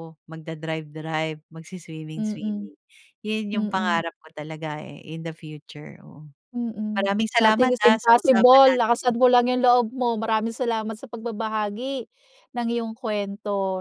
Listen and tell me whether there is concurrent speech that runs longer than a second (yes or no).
yes